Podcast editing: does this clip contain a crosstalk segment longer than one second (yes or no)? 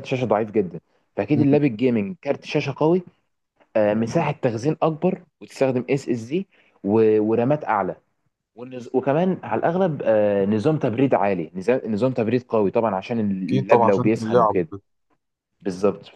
yes